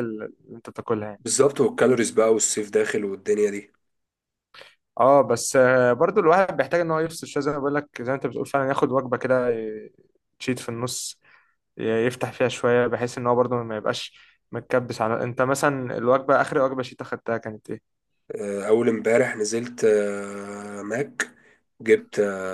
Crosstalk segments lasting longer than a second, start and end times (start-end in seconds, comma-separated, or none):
none